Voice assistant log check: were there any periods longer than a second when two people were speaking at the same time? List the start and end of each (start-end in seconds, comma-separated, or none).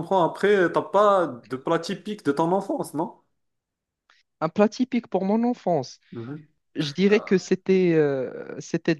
none